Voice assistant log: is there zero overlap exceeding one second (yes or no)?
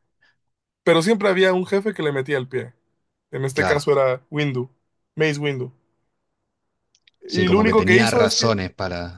no